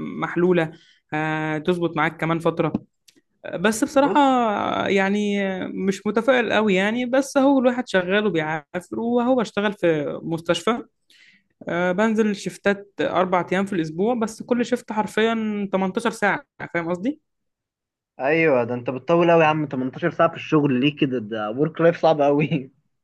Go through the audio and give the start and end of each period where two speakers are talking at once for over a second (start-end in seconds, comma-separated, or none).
none